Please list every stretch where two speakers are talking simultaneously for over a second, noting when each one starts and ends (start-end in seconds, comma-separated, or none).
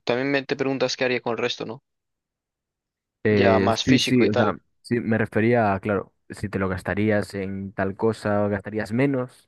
3.3-4.6